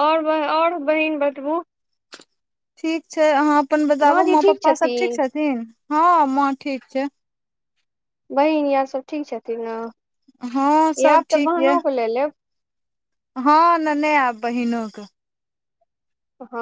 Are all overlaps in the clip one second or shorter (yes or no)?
no